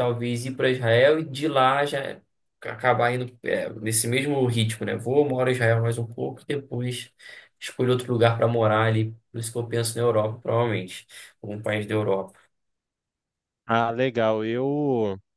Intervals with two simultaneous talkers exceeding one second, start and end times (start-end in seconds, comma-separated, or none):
none